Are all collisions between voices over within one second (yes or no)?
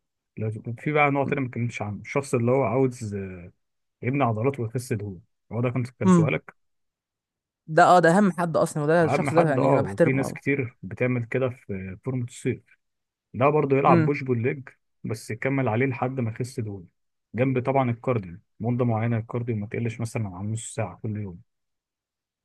no